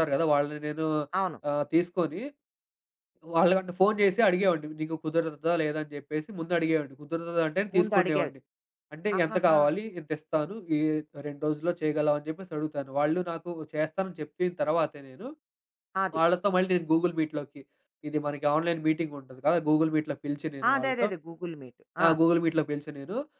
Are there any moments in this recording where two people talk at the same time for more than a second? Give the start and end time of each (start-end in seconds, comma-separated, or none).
none